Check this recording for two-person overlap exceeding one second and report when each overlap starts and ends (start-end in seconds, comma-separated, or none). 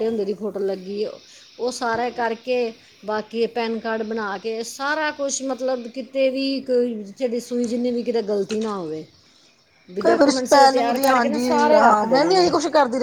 10.7-12.5